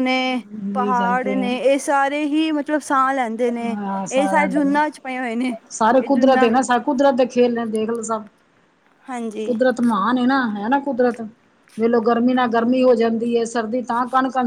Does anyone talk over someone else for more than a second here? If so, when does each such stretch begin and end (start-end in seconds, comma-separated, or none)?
none